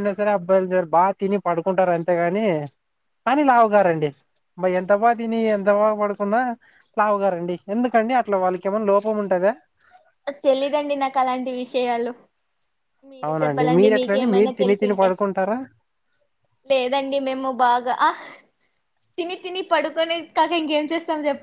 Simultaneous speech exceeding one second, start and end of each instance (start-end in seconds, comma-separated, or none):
13.3-15.1